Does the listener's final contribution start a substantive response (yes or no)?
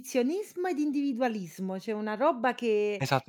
yes